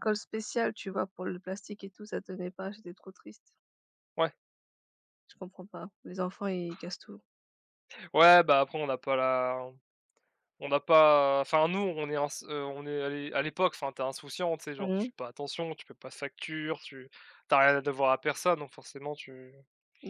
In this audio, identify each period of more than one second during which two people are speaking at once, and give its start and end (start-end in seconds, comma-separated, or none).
none